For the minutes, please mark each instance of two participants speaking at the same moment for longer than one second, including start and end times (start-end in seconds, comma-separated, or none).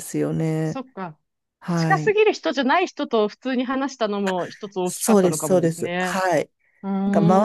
4.8-6.2